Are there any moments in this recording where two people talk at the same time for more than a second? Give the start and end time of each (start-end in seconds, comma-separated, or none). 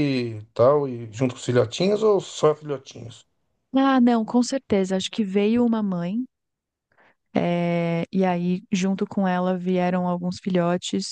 none